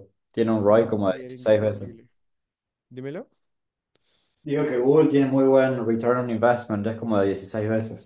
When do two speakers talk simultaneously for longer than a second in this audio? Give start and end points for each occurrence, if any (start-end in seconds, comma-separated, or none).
0.6-2.0